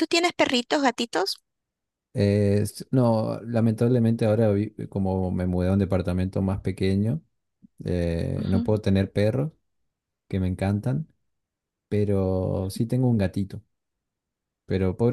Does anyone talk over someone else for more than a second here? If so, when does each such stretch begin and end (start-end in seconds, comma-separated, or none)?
none